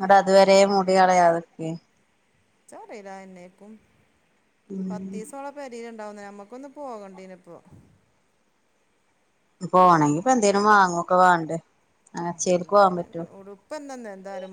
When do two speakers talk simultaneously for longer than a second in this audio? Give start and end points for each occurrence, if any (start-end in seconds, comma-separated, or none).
none